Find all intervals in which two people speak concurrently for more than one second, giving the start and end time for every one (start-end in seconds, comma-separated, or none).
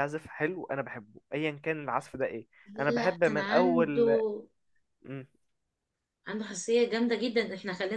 2.9-4.2